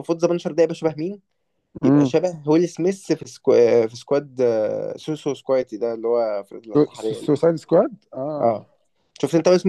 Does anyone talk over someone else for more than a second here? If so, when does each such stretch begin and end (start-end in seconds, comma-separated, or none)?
none